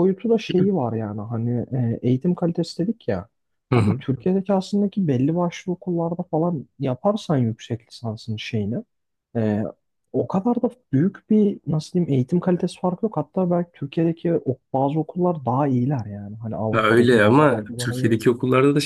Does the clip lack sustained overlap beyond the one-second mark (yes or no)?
no